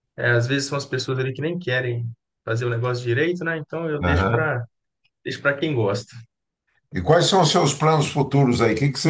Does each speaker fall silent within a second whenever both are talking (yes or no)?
yes